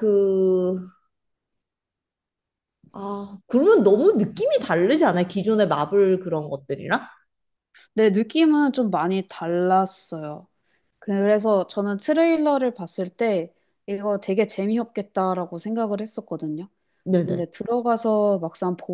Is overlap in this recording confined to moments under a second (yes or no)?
yes